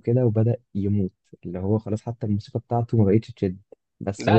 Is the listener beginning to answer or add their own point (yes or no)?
yes